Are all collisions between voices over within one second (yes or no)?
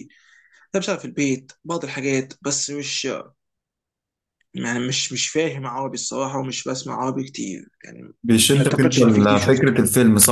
no